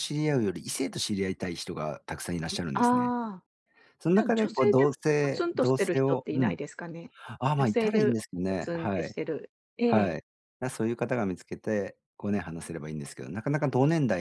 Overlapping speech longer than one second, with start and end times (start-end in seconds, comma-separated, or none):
4.1-6.6, 7.6-9.2